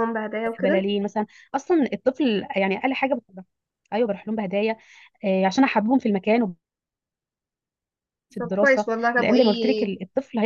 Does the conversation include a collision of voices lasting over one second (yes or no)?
yes